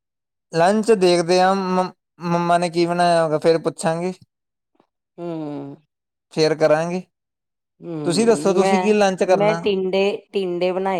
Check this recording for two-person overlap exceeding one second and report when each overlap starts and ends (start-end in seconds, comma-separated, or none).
8.0-9.6